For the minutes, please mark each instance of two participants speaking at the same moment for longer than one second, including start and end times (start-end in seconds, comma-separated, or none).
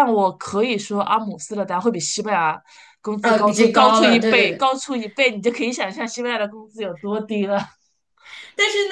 3.2-4.7